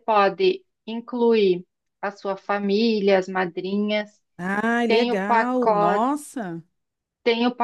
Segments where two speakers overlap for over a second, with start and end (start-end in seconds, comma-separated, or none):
4.8-6.1